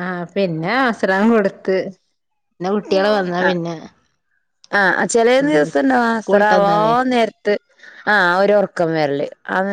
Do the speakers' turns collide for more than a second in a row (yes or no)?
yes